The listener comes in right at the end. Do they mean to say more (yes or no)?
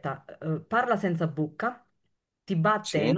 no